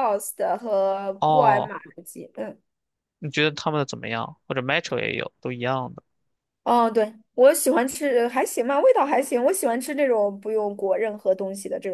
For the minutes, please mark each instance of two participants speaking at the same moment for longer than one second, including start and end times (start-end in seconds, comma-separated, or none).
none